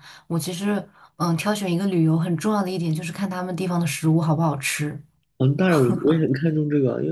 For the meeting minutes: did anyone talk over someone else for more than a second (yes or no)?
no